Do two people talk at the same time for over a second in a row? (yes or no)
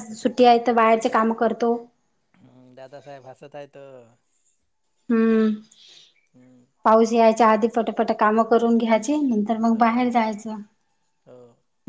no